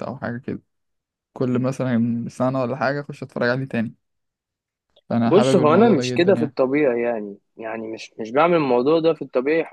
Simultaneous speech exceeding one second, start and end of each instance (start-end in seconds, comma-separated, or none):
5.2-6.6